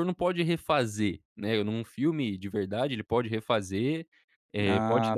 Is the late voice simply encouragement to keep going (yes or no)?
yes